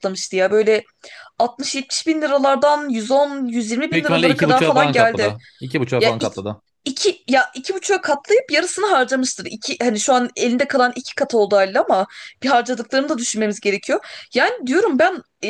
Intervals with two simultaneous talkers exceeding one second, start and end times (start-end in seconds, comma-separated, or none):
3.9-5.3